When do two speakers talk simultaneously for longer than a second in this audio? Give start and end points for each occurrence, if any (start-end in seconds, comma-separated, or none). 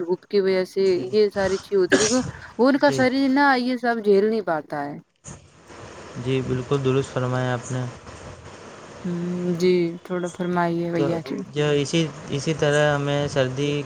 none